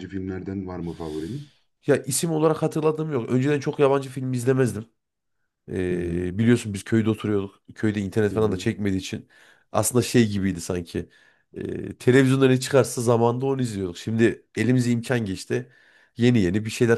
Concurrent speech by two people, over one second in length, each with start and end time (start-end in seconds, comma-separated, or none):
none